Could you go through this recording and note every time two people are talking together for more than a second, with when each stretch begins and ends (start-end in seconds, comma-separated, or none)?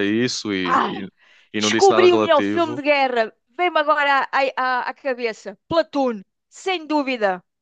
1.6-2.8